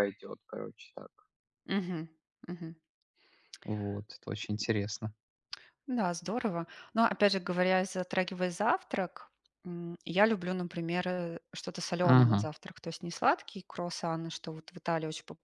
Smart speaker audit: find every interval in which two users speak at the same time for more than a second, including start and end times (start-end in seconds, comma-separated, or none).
none